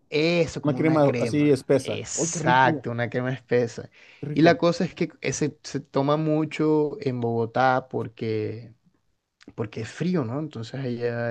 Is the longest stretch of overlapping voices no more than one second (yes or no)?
no